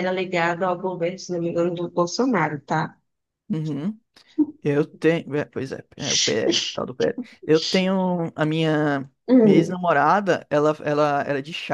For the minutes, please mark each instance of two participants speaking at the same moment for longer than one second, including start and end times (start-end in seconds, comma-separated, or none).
none